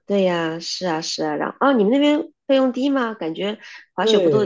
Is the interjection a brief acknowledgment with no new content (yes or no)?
no